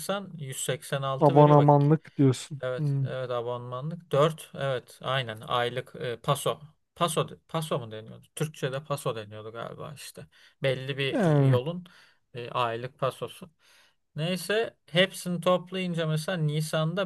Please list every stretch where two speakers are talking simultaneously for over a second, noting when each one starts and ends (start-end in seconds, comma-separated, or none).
none